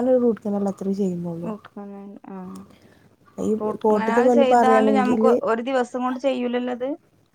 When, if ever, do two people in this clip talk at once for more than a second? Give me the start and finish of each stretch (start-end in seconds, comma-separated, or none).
3.6-5.2